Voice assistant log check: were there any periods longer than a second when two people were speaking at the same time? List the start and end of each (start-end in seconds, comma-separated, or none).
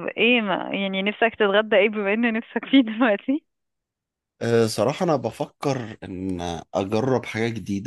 none